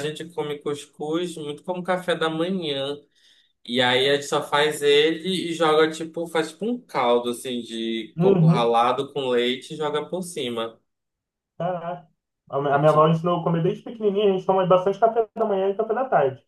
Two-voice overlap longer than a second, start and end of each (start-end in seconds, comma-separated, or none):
none